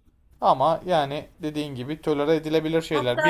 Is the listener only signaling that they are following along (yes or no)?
no